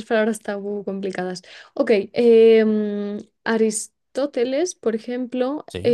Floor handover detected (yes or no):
no